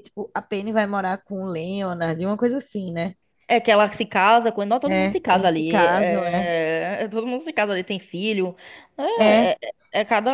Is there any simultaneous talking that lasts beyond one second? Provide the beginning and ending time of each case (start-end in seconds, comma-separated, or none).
4.9-6.5